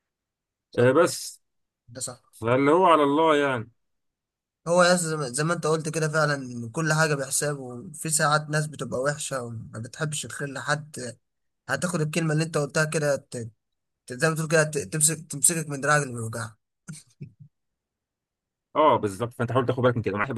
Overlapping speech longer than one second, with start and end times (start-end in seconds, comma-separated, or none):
none